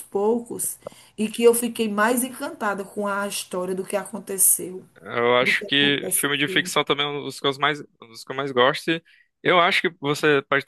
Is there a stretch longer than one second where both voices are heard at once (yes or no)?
yes